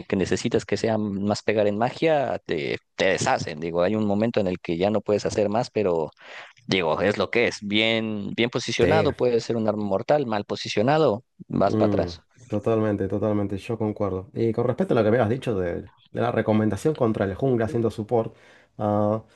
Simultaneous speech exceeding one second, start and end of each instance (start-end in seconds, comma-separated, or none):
none